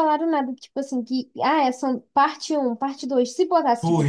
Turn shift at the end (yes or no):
no